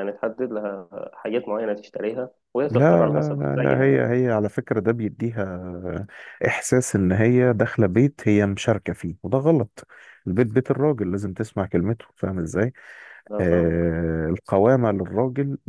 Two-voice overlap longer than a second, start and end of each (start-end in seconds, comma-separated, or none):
2.7-4.1